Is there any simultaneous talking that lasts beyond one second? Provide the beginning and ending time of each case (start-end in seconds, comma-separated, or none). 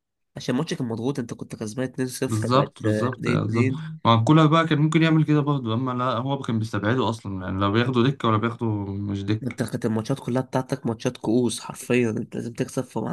2.3-4.0